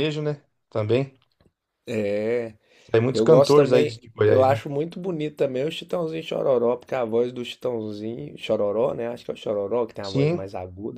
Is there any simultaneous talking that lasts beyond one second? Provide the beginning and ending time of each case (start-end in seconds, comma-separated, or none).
3.1-4.6